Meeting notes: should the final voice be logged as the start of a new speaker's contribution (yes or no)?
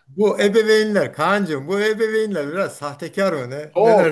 yes